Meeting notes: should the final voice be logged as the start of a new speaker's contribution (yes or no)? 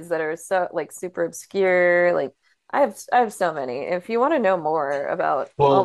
yes